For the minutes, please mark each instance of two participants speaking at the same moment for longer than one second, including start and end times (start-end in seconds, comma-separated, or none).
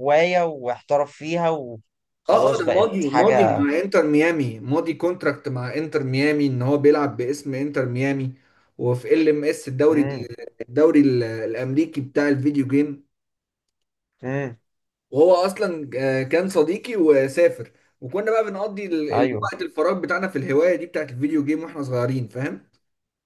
2.3-3.7